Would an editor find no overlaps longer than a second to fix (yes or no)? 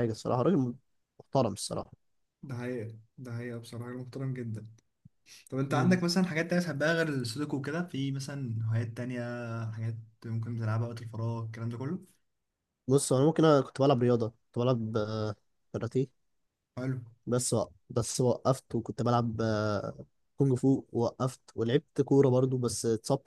yes